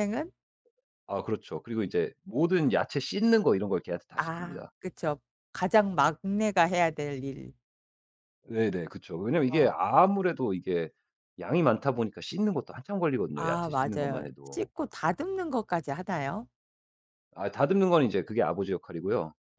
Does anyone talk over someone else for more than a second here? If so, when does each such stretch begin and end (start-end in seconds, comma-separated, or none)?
13.3-14.7